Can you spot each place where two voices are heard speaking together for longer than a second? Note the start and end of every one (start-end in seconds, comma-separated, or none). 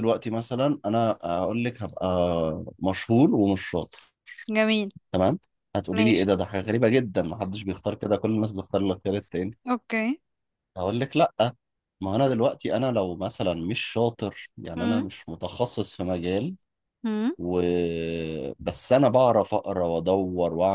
none